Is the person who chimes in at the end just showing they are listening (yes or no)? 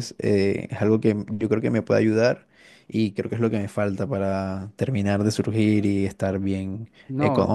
yes